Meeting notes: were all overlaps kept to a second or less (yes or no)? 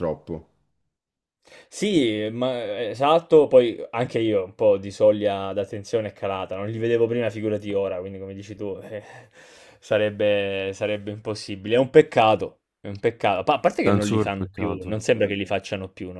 no